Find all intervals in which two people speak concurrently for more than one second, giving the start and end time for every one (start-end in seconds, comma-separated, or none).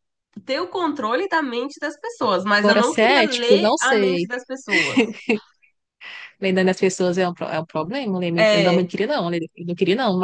2.6-4.3